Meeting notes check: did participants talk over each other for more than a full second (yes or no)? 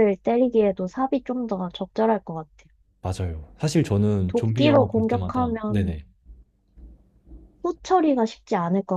yes